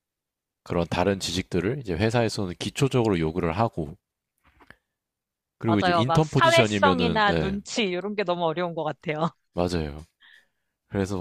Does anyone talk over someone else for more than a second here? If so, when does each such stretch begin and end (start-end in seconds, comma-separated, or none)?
5.7-7.6